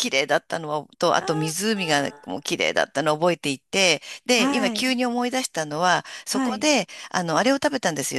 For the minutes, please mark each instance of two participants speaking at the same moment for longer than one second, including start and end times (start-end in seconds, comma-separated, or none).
1.1-2.4